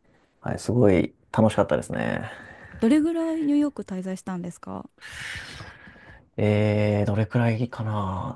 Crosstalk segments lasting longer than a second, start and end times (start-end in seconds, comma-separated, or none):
none